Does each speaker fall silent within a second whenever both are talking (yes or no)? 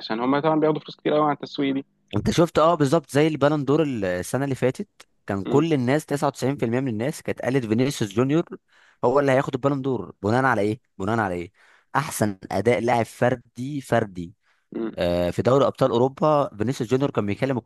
yes